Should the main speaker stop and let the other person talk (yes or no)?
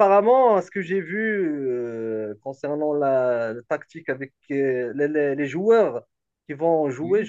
no